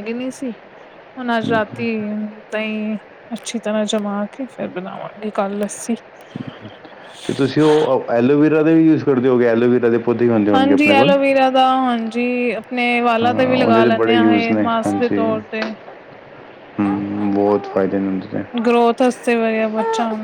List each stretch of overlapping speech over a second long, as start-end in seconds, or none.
13.2-15.2